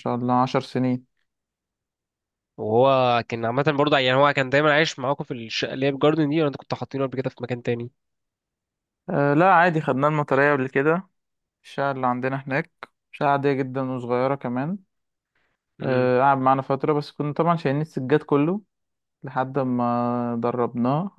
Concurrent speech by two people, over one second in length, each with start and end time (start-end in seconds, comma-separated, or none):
none